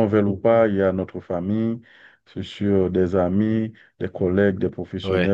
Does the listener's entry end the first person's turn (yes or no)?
no